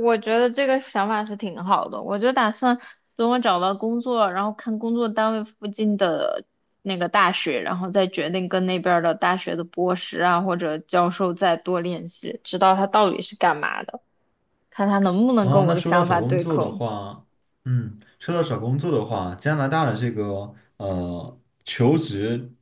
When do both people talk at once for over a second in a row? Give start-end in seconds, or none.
15.4-16.8